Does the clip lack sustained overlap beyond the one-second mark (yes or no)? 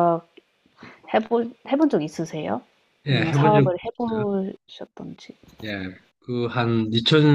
no